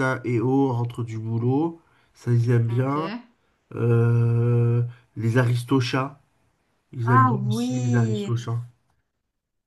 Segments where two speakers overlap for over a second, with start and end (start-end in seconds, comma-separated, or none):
7.1-8.4